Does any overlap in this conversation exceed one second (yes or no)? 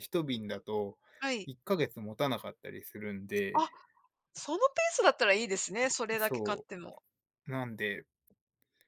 no